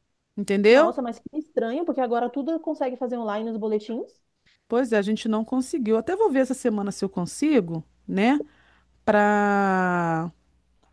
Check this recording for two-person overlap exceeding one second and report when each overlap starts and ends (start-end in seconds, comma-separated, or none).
none